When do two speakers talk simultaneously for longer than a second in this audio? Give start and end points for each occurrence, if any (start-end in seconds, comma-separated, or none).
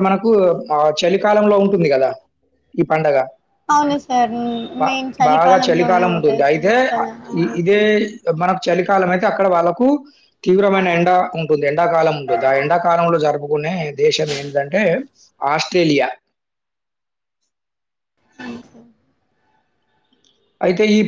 5.3-6.7